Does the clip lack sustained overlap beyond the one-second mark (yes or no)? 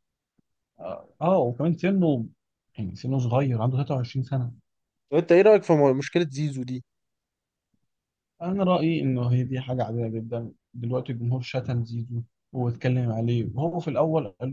yes